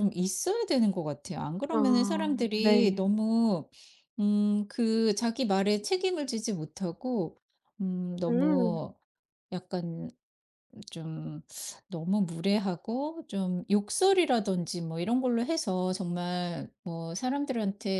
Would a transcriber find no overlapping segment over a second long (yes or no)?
no